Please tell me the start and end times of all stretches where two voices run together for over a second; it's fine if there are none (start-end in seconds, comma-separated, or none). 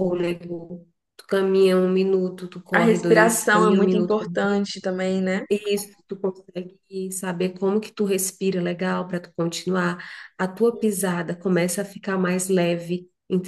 2.7-4.2